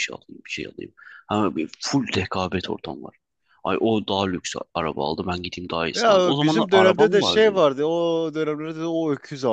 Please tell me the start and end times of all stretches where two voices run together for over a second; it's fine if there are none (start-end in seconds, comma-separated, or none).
5.9-7.6